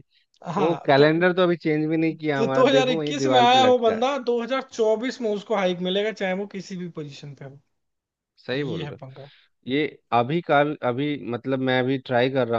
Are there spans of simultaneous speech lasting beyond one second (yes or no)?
yes